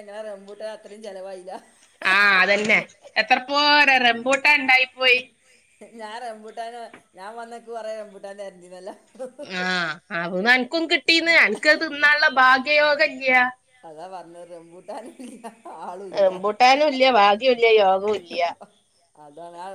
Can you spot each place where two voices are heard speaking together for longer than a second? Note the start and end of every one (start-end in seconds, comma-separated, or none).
none